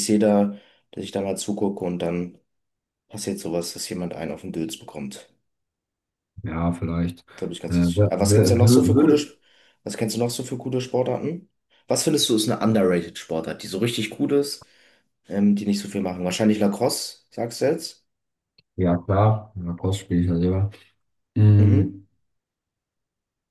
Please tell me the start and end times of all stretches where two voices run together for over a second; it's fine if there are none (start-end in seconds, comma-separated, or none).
7.7-9.3